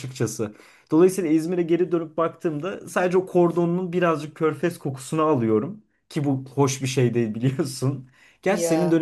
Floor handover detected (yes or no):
no